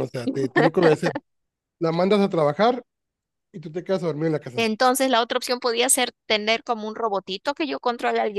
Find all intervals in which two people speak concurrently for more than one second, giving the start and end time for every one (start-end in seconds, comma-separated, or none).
none